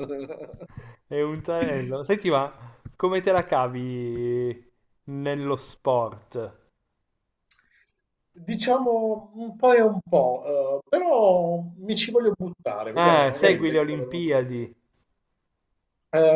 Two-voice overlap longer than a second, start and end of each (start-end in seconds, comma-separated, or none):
13.0-14.3